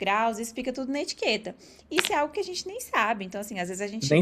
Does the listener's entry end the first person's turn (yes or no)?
no